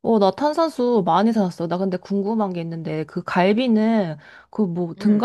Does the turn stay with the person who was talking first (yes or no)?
yes